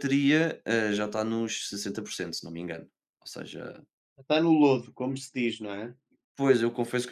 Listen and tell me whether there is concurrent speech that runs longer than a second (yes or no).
no